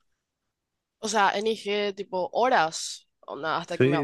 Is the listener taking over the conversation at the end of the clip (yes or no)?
yes